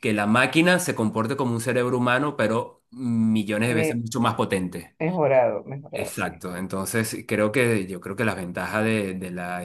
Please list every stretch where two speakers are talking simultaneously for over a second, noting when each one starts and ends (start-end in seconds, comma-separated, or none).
none